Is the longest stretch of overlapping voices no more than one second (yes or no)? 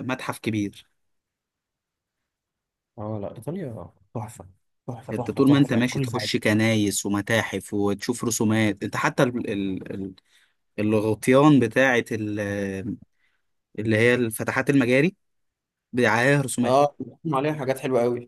no